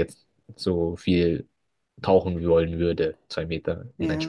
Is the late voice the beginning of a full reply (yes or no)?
yes